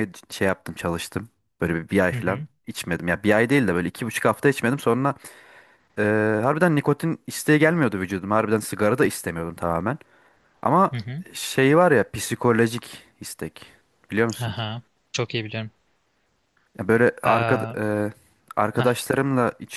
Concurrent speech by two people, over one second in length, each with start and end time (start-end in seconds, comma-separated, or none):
none